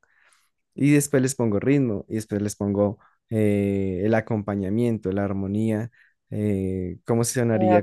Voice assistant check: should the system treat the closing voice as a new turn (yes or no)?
no